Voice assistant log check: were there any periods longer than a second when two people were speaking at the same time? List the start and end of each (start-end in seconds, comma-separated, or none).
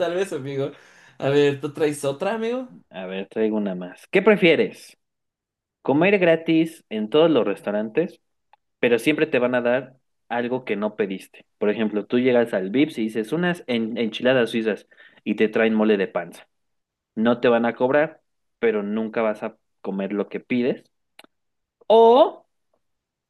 none